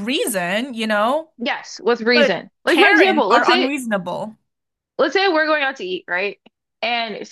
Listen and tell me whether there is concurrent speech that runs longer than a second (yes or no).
yes